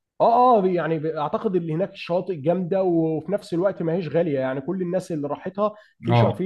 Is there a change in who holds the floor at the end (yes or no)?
no